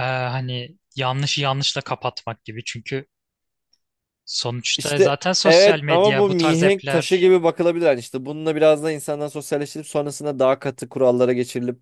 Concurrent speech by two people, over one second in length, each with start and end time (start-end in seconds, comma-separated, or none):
4.8-7.3